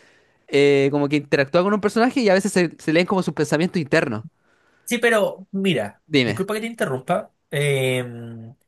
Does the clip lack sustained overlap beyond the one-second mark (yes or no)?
yes